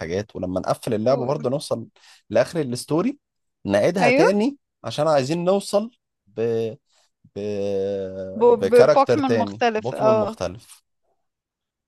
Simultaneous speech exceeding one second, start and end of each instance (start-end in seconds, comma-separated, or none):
8.5-10.4